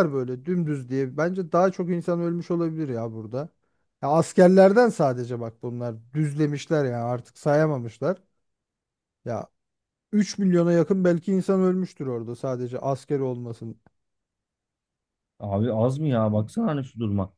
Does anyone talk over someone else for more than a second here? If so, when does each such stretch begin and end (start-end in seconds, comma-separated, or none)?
none